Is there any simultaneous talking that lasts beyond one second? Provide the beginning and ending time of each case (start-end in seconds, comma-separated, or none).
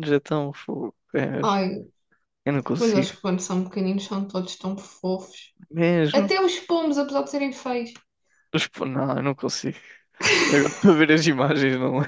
none